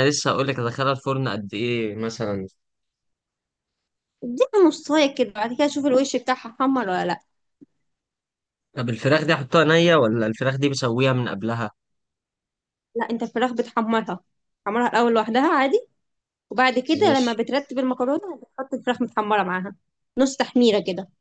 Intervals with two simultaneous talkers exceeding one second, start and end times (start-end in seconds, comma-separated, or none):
none